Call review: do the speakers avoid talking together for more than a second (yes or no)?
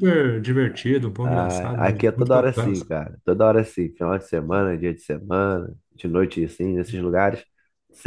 no